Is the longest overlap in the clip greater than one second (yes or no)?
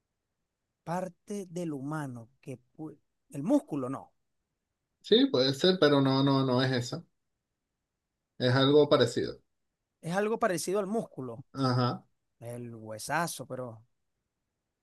no